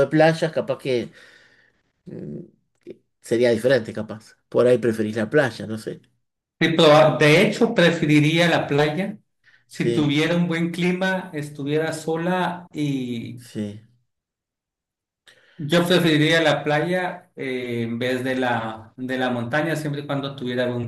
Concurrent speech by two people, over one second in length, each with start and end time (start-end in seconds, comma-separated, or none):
none